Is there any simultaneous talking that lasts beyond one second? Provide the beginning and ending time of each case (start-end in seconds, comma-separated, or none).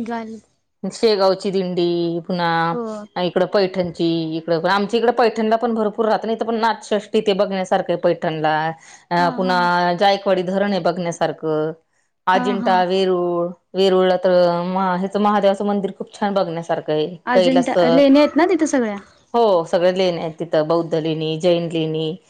none